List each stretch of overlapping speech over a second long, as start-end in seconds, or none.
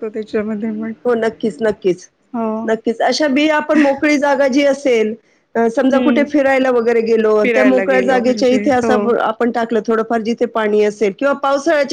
7.4-9.1